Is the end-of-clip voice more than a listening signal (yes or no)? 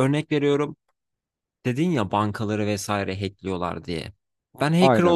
no